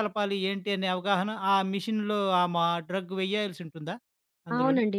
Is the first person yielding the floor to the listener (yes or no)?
yes